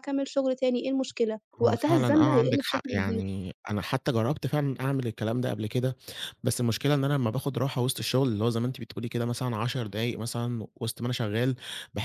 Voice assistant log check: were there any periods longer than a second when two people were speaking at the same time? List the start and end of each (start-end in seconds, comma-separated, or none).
1.6-3.2